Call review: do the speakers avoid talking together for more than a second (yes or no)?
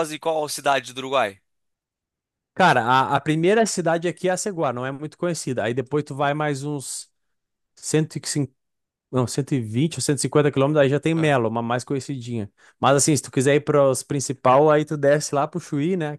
yes